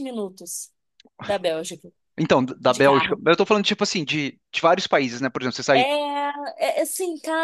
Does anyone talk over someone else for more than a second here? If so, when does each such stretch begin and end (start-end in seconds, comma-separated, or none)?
none